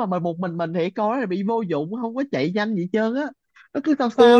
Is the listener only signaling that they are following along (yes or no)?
no